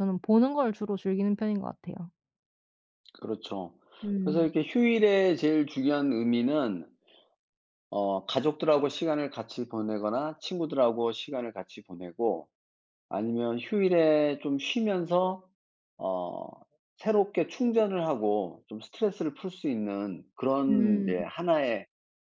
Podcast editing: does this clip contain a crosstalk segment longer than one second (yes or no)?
no